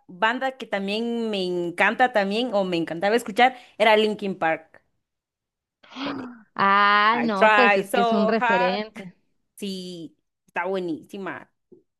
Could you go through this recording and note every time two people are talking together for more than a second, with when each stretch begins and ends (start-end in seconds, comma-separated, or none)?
7.1-8.8